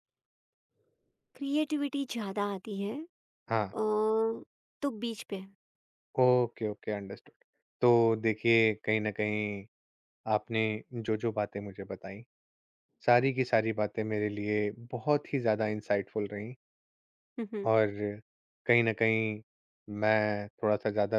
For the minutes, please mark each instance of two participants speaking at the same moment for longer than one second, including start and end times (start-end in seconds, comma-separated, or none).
none